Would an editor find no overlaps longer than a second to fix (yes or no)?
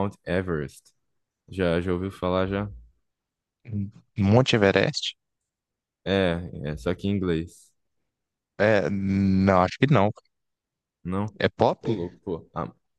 yes